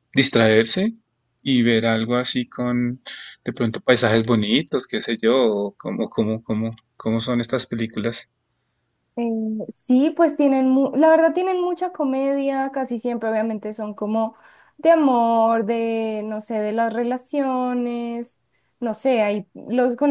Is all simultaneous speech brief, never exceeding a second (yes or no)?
yes